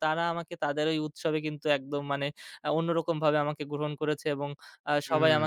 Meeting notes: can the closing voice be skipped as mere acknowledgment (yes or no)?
yes